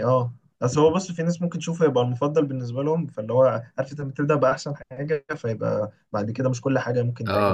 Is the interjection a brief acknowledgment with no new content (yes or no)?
no